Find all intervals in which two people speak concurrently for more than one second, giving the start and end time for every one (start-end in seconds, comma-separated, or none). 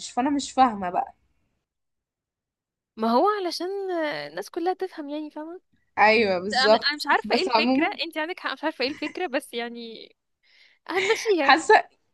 6.5-7.9